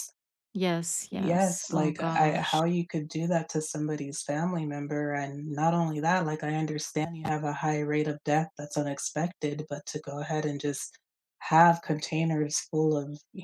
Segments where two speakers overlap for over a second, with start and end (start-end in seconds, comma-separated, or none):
1.1-2.6